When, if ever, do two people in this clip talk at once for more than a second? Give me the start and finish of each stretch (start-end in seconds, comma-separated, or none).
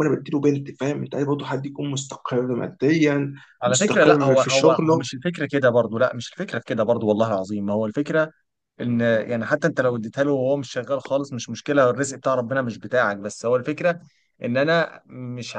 3.6-5.1